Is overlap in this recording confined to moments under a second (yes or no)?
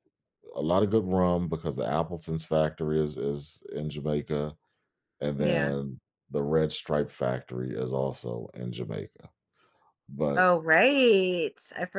yes